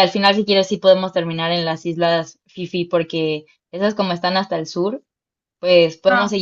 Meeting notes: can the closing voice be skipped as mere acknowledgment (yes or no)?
yes